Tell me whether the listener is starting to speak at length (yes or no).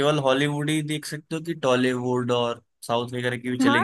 yes